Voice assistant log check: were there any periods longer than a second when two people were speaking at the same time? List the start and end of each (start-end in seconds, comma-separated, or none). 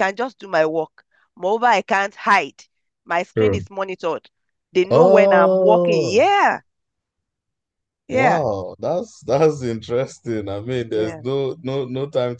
4.9-6.2